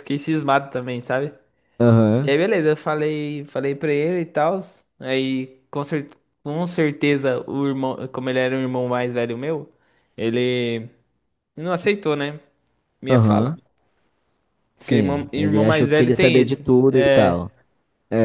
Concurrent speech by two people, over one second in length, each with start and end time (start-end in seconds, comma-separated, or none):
14.8-17.4